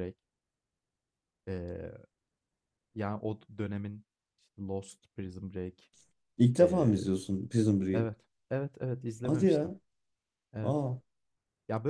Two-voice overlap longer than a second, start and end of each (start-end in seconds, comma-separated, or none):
none